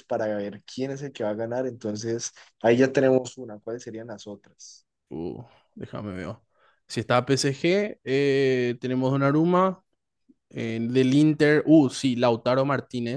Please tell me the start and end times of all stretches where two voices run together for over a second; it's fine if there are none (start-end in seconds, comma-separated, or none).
none